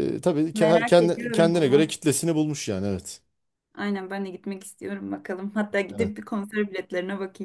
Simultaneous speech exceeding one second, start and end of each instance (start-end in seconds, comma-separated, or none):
0.5-1.9